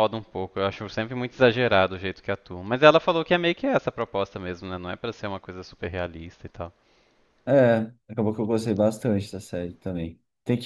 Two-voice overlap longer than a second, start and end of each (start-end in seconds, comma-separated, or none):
none